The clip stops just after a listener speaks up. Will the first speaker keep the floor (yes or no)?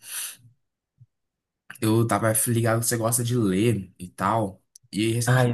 yes